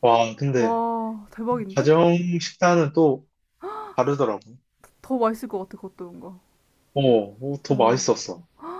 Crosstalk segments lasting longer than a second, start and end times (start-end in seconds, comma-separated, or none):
none